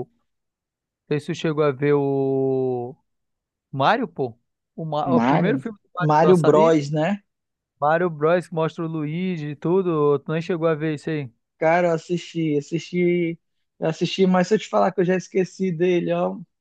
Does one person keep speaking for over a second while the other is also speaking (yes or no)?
yes